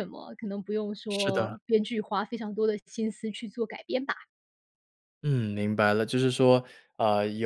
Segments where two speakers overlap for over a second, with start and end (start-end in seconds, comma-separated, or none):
none